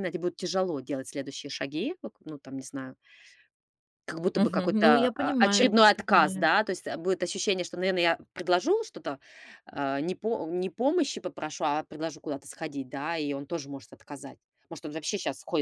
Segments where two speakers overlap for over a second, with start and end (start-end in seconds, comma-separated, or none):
4.3-6.5